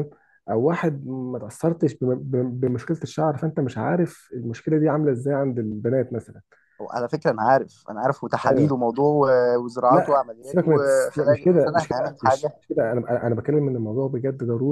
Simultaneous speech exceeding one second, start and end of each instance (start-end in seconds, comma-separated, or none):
9.9-12.6